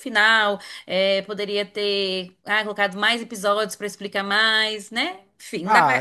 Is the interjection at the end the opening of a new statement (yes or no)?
yes